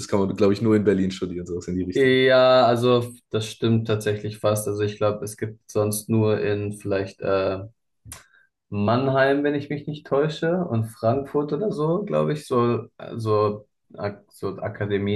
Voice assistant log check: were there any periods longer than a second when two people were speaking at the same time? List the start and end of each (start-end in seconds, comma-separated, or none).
none